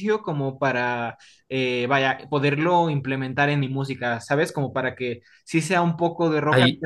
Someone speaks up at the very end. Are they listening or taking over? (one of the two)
listening